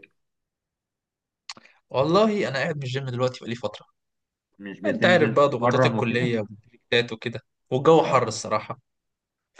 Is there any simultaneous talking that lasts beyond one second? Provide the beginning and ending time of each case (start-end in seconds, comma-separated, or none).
4.8-6.3